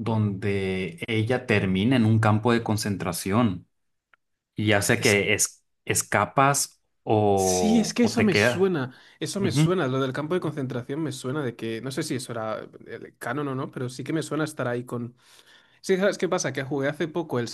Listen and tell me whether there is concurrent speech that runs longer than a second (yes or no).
yes